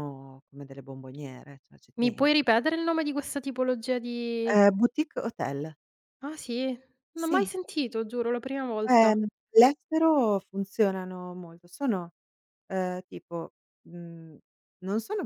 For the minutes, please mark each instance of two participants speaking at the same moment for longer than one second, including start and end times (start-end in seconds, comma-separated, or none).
none